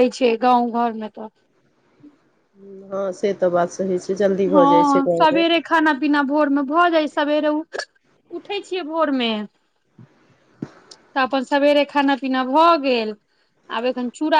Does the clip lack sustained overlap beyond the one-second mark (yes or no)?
yes